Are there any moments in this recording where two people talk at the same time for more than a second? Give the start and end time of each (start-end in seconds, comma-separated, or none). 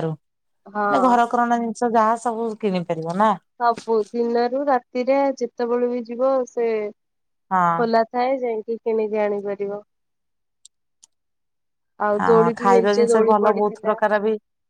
12.2-13.9